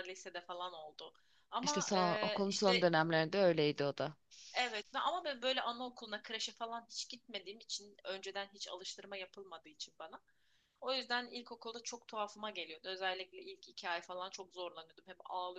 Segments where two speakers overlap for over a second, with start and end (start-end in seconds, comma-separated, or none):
1.6-2.9